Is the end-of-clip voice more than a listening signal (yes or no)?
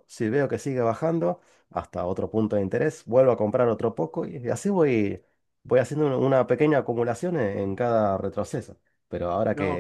no